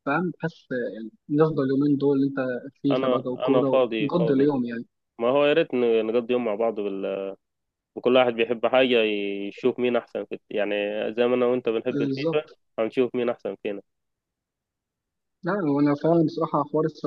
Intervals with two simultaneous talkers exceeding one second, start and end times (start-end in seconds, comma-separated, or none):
2.9-4.5